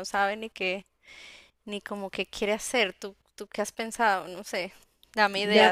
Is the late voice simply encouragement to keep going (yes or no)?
no